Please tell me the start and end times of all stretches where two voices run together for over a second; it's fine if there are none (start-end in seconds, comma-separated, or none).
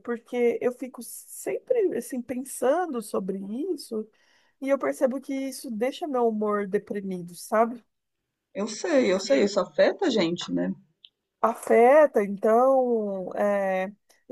none